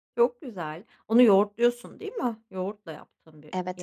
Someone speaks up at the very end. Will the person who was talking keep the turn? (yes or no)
no